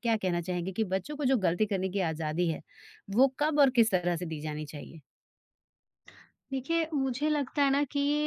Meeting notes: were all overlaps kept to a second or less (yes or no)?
yes